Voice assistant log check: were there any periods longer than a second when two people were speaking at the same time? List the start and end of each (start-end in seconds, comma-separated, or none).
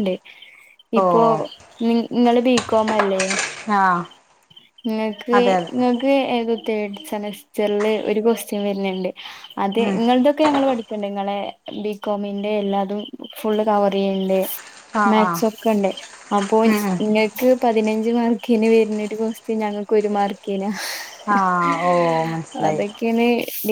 none